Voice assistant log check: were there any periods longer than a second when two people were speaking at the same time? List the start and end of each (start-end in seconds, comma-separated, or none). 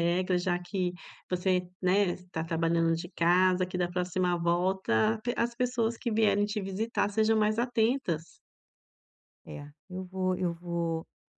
none